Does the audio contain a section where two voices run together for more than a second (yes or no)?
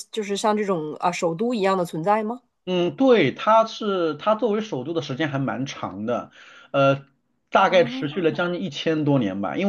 no